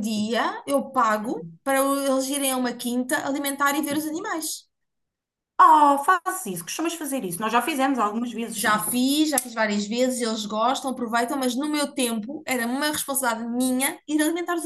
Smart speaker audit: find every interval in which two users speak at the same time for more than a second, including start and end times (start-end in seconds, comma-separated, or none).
none